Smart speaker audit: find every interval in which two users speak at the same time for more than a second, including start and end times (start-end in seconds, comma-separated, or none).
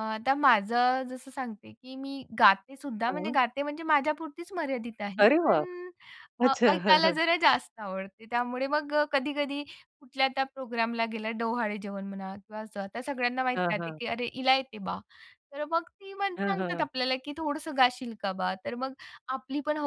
none